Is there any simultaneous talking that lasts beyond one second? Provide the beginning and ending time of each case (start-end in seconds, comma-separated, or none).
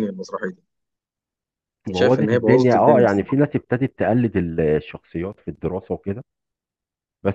1.9-3.4